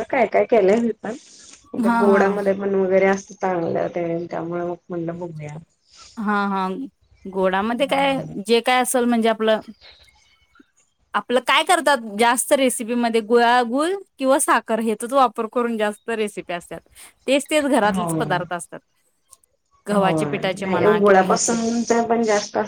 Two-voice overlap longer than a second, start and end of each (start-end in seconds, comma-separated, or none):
20.0-21.6